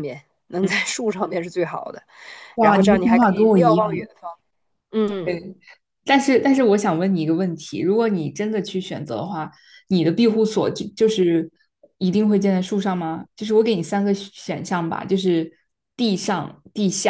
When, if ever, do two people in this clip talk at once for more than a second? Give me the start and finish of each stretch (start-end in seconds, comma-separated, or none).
2.6-4.1